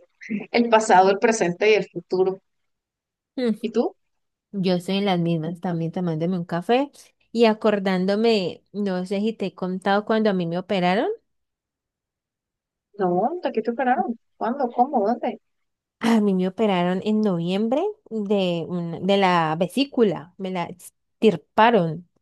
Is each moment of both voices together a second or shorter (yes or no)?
yes